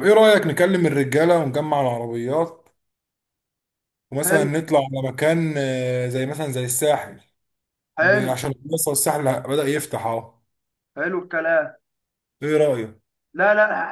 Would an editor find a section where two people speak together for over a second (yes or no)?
no